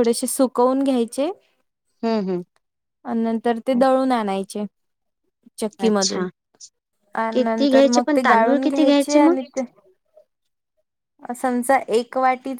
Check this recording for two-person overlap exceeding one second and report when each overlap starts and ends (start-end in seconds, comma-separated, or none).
7.3-9.3